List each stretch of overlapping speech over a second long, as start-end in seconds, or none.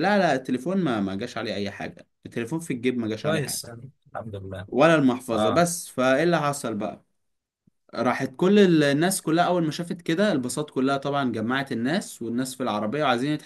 none